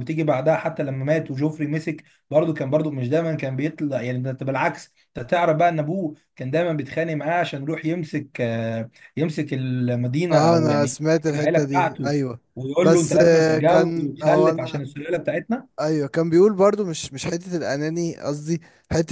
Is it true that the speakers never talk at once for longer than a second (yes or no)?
no